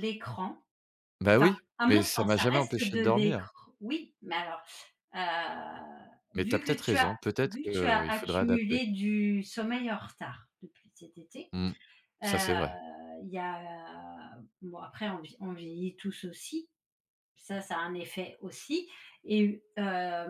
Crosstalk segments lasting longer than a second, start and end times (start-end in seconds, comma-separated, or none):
1.3-3.5, 6.3-8.8